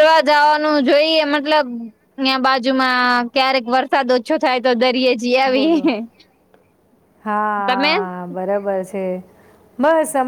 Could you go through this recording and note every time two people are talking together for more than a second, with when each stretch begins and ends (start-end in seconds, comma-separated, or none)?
none